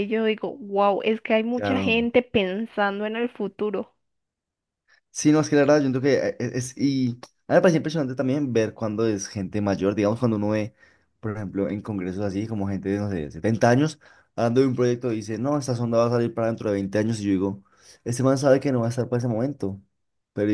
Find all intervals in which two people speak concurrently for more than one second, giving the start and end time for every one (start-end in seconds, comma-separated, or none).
none